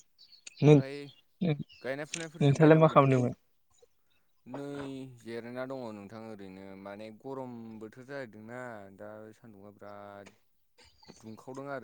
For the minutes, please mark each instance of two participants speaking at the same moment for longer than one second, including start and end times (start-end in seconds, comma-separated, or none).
1.8-3.1